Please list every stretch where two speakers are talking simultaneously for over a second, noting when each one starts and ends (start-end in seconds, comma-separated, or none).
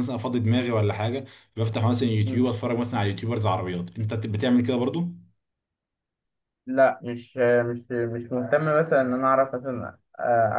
none